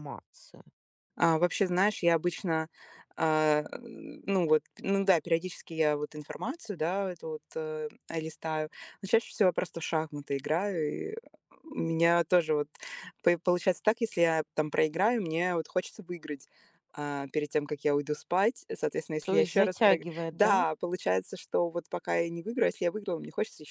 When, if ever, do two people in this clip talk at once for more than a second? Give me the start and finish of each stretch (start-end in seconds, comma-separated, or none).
19.2-20.6